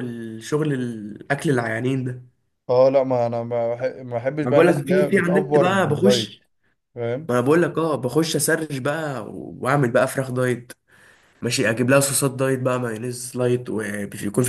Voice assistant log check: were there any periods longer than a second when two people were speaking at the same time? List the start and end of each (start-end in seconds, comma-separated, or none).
4.4-6.4